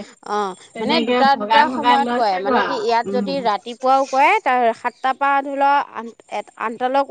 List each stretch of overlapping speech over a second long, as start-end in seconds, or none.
0.7-3.4